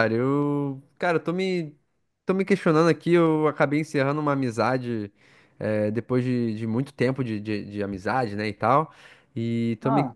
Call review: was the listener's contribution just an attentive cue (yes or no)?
yes